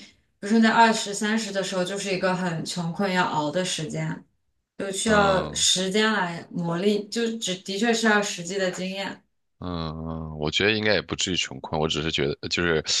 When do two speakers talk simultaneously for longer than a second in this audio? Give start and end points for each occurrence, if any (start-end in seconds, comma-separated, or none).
none